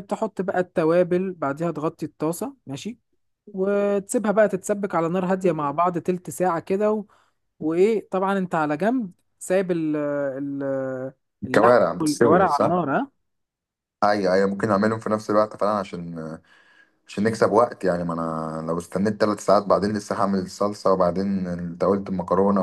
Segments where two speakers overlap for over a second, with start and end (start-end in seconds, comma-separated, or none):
11.5-12.8